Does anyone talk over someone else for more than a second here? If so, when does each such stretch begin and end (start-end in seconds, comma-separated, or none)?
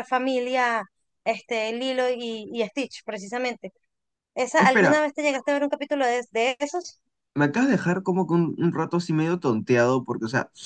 none